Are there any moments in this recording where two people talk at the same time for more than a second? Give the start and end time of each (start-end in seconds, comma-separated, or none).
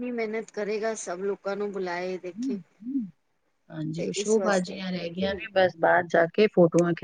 4.0-5.4